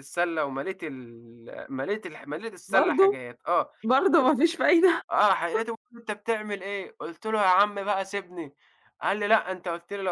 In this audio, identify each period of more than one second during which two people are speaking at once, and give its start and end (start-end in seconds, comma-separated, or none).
none